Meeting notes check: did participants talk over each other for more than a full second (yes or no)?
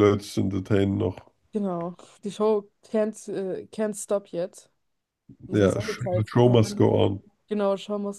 yes